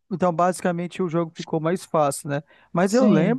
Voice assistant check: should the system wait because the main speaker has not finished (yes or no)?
yes